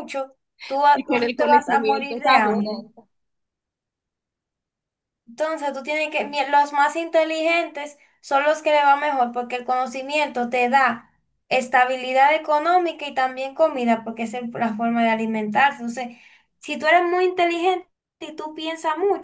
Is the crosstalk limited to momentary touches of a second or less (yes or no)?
no